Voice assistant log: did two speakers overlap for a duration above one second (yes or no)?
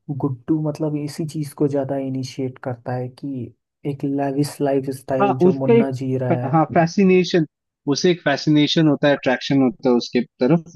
yes